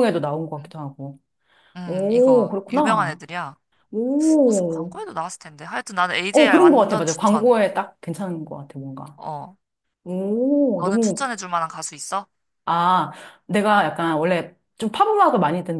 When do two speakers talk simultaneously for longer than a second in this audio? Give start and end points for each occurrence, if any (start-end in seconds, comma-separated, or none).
1.9-3.2, 6.3-7.6